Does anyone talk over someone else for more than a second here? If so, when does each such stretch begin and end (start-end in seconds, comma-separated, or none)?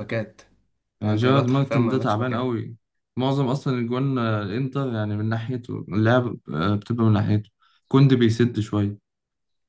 1.0-2.5